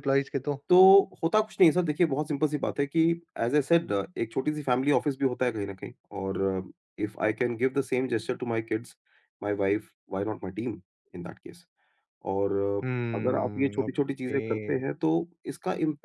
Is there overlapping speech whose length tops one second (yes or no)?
yes